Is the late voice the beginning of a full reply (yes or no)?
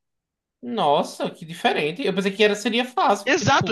yes